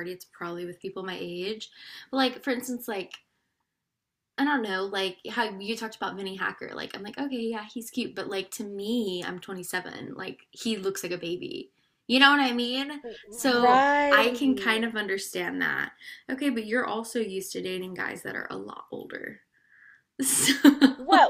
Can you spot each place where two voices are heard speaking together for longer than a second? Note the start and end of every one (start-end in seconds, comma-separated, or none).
13.6-14.9